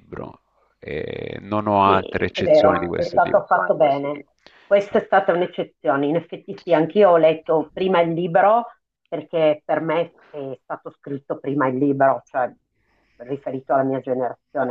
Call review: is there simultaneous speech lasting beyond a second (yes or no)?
yes